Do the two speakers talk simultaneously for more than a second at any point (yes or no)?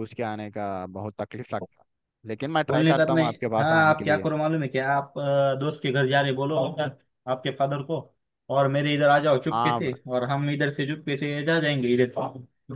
yes